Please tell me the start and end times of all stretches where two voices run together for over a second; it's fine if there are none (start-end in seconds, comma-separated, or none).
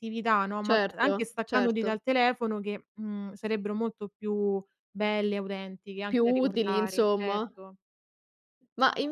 0.6-2.0, 6.1-7.5